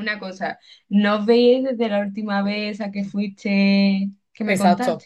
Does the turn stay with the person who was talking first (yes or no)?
no